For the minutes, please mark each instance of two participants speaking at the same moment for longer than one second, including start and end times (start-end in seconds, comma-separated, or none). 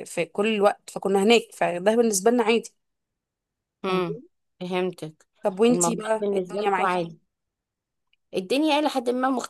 5.7-7.0